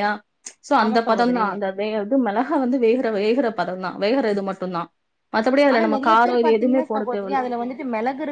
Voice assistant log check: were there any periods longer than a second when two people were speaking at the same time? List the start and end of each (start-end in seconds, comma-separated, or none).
none